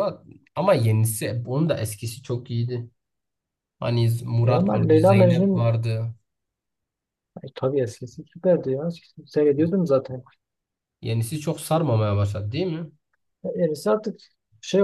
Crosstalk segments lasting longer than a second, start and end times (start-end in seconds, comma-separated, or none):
4.4-5.7